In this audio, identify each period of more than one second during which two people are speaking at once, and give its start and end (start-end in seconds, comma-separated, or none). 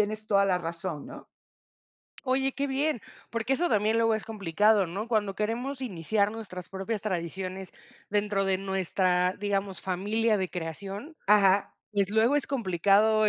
none